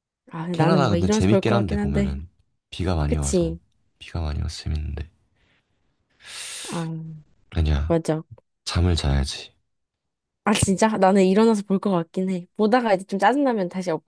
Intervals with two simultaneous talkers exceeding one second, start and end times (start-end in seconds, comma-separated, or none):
0.5-2.2